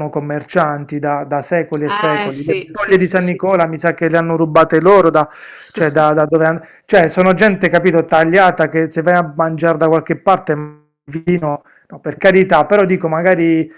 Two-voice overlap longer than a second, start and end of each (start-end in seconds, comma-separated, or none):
1.9-3.4